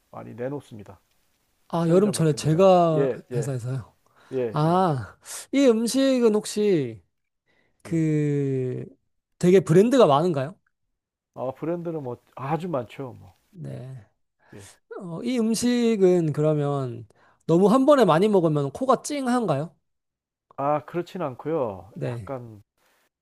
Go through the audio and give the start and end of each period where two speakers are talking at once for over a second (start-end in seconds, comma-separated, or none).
1.7-3.5